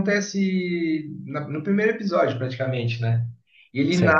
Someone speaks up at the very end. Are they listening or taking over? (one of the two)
listening